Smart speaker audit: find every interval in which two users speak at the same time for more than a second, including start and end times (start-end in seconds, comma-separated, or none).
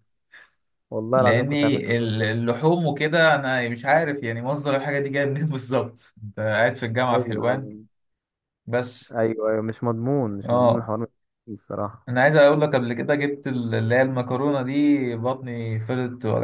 1.1-2.5